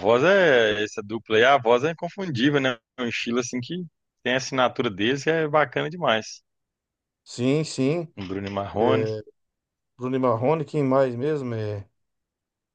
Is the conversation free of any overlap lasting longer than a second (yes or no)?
yes